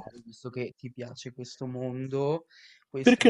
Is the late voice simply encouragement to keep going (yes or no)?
yes